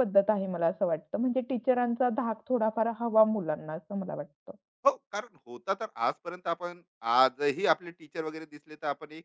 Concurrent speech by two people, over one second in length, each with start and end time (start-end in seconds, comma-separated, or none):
none